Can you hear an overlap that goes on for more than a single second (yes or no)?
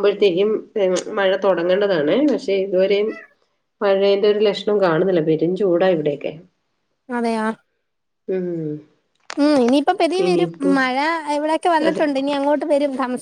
no